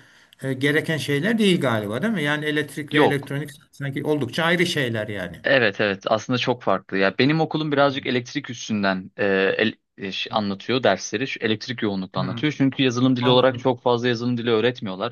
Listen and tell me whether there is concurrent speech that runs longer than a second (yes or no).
no